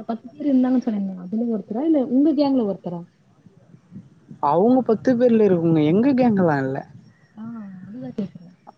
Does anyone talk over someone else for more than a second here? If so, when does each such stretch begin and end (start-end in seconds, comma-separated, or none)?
none